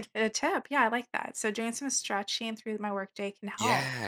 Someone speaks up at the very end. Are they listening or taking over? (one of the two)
taking over